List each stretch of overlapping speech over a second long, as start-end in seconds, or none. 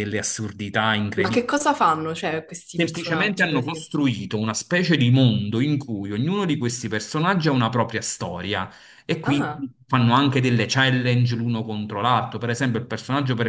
2.7-3.9